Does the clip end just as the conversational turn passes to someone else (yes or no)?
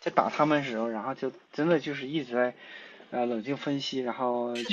no